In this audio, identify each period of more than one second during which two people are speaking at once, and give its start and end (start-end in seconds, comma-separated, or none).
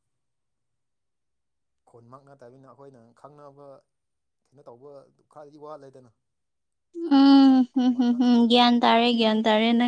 7.1-8.7